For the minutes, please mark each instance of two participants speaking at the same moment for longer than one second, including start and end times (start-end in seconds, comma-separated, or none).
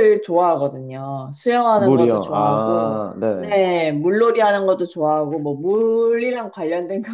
1.8-3.6